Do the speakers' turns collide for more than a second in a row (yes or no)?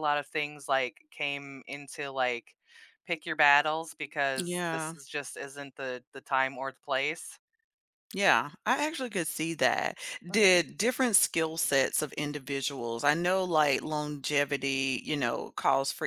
no